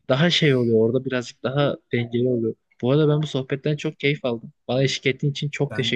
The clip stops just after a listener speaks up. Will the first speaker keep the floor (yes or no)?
no